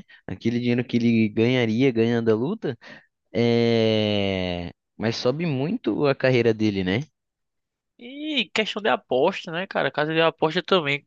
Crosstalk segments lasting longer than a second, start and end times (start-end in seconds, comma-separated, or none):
none